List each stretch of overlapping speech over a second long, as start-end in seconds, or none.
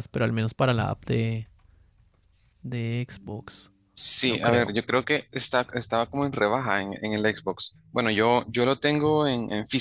none